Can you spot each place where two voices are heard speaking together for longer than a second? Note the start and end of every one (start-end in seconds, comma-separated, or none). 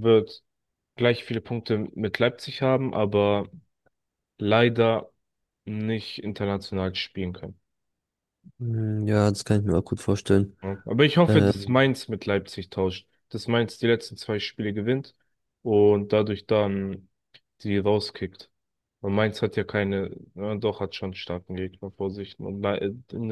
none